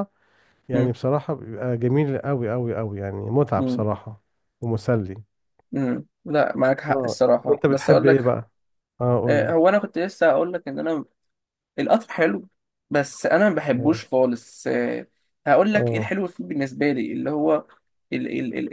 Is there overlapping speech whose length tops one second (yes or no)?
yes